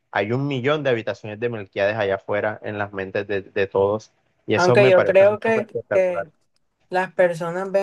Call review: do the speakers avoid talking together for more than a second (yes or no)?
no